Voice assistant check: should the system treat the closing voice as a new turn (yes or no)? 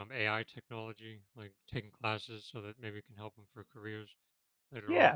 yes